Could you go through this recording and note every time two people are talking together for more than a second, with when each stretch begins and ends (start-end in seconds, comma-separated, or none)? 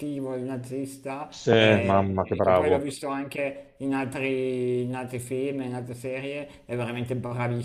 1.3-2.9